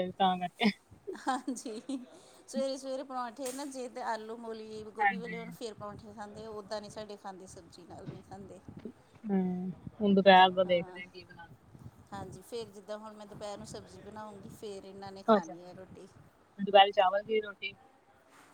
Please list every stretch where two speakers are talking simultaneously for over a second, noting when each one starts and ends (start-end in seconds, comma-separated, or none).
none